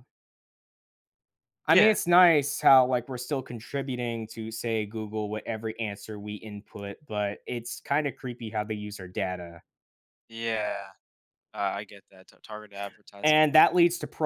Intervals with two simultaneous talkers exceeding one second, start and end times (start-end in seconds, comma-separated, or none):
none